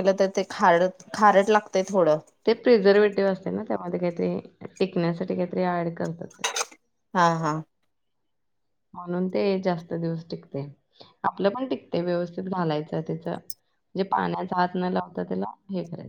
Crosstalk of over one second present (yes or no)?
no